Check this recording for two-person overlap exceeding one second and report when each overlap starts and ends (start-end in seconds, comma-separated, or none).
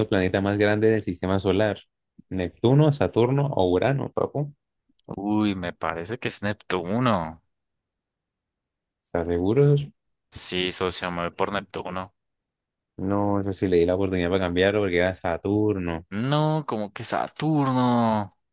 none